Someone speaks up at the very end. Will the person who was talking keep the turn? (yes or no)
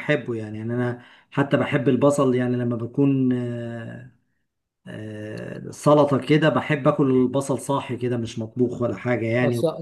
no